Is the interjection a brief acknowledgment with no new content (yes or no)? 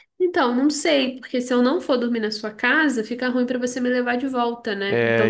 no